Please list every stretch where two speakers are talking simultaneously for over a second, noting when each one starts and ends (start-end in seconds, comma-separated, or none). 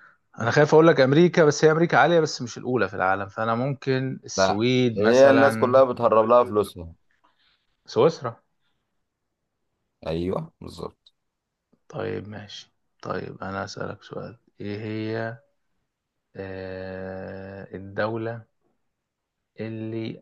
4.4-5.8